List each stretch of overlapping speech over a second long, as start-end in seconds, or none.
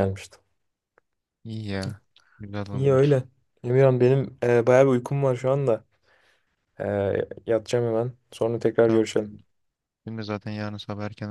none